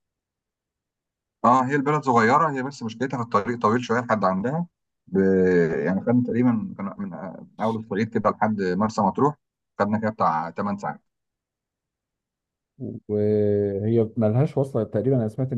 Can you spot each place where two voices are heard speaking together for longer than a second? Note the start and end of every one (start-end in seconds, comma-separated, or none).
none